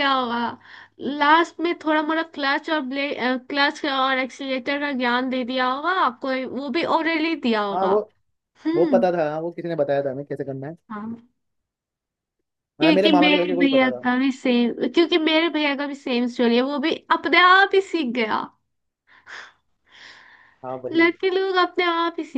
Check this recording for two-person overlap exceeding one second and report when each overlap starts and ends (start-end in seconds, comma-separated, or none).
12.8-14.0